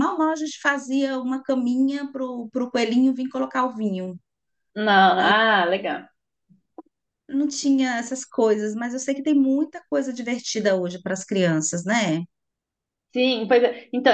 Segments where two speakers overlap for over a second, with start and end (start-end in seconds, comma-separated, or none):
none